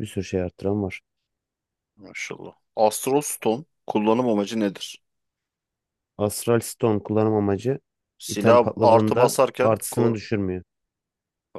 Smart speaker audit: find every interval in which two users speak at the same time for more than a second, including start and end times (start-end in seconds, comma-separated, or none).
8.3-10.2